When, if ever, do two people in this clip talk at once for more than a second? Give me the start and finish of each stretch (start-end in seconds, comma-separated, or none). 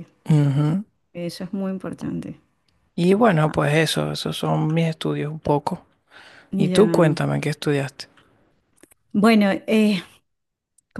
none